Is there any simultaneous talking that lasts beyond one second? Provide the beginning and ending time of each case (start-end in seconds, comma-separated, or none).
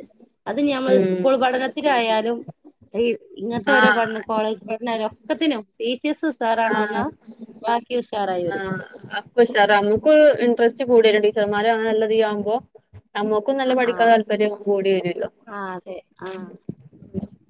none